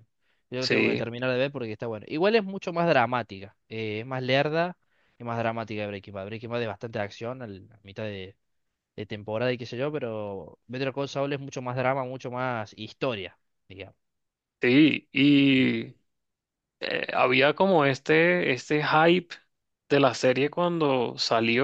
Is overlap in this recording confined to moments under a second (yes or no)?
yes